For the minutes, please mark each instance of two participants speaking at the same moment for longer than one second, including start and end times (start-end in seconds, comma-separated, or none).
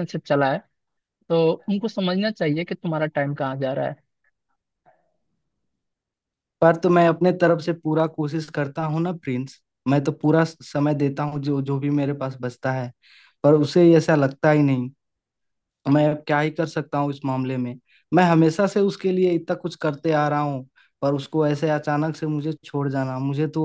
none